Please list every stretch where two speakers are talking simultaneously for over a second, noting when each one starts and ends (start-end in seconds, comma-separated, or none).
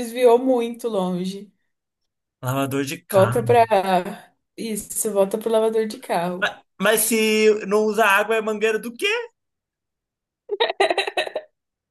none